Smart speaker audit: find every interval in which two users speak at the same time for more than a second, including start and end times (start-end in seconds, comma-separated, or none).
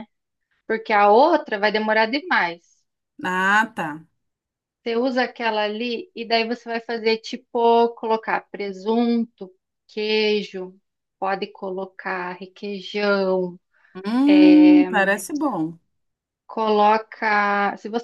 none